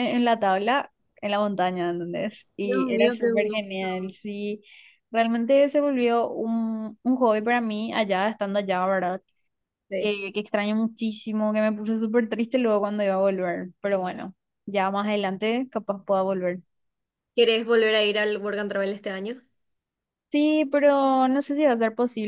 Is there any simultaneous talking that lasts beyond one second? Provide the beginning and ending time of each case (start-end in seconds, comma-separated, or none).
2.6-3.9